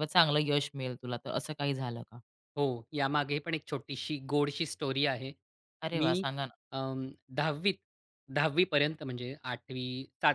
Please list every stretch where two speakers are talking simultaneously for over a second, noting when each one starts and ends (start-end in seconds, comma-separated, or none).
none